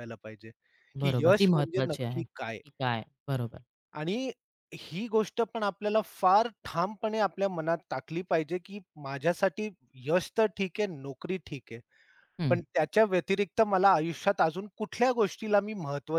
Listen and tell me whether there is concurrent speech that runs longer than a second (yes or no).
yes